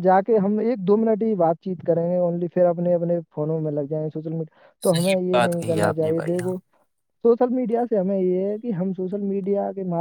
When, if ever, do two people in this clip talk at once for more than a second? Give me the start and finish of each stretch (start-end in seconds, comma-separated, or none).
4.9-6.5